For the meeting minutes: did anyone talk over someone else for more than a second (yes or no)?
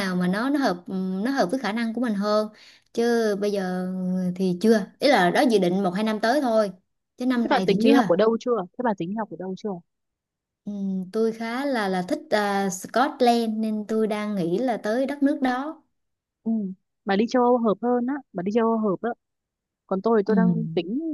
no